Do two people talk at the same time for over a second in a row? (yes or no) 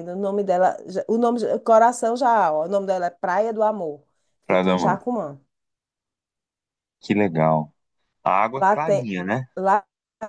no